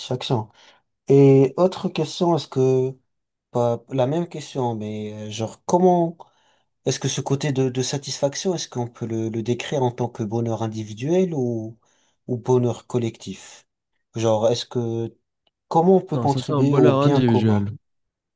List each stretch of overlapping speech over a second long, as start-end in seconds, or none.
16.1-17.7